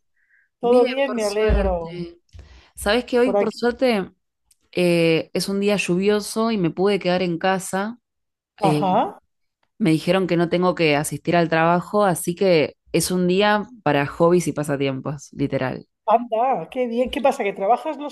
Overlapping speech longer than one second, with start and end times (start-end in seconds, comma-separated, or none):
0.6-2.0